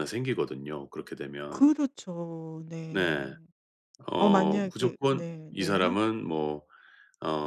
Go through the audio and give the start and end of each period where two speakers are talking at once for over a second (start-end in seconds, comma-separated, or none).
4.2-6.0